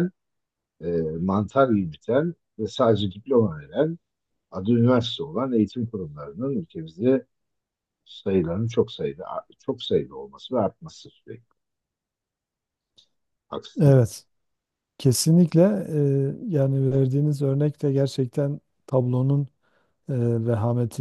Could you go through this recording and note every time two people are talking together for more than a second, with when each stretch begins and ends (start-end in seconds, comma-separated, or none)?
none